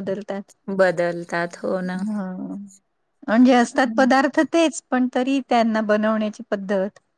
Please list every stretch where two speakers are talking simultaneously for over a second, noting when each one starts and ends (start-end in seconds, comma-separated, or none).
none